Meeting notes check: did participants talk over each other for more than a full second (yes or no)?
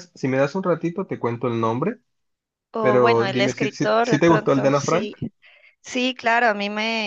yes